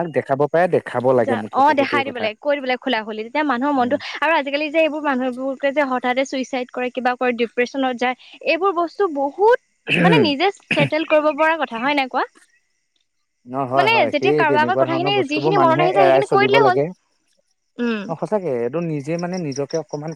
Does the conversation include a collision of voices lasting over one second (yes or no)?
yes